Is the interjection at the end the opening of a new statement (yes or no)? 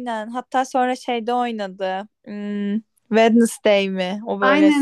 yes